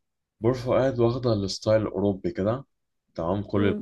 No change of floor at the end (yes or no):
yes